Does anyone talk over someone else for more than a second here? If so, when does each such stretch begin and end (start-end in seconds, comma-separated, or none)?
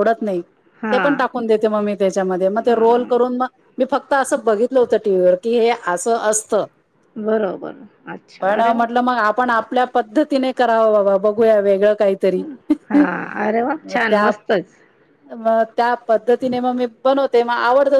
none